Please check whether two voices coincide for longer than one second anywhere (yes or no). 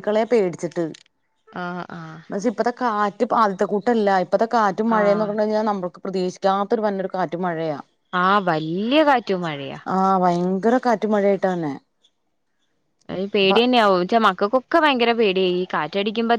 no